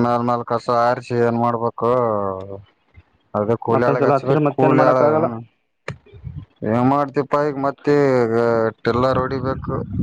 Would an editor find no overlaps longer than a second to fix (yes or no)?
no